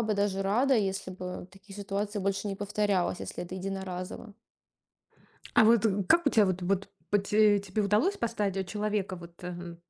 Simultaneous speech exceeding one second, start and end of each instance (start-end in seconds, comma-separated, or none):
none